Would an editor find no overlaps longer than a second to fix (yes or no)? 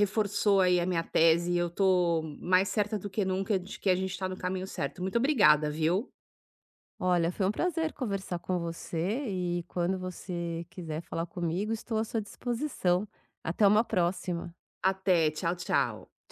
yes